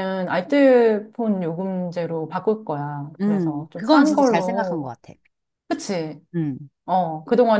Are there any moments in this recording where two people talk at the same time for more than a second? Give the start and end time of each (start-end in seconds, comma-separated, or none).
3.2-4.9